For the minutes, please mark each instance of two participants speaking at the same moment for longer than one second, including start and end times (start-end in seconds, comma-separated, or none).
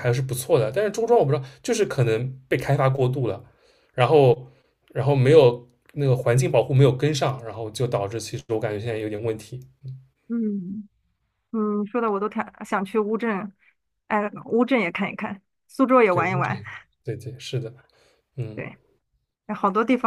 none